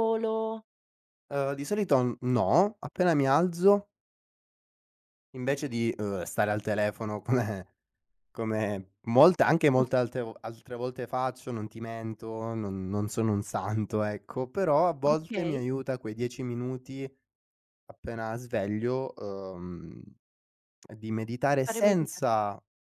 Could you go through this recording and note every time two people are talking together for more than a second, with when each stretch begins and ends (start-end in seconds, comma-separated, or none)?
none